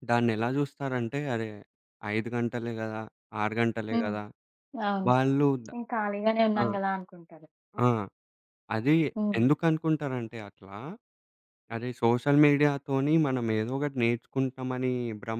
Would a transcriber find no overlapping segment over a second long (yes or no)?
yes